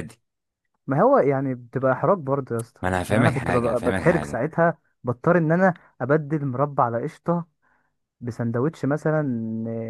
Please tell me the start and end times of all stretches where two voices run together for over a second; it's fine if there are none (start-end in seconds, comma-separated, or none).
2.8-4.5